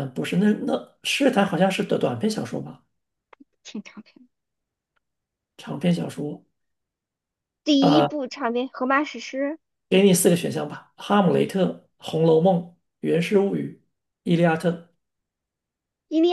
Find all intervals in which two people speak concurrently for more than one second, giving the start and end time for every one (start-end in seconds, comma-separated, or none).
none